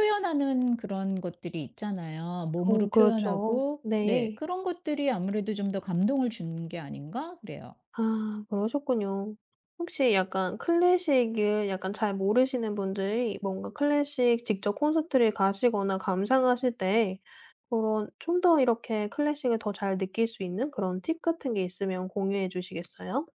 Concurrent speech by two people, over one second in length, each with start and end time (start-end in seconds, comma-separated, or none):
2.7-4.4